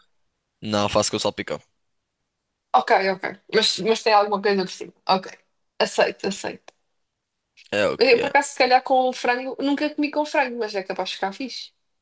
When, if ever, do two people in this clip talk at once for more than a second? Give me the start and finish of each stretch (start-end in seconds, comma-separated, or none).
none